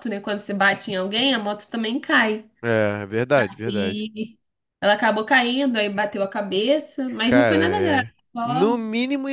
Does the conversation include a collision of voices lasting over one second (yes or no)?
yes